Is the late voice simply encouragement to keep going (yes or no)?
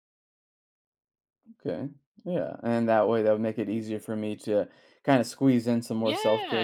no